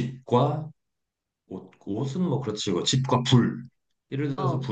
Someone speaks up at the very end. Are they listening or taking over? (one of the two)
listening